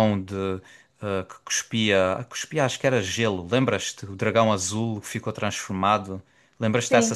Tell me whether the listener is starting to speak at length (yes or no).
yes